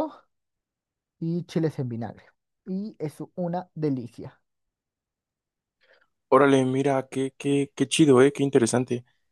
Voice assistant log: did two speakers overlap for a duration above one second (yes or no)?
no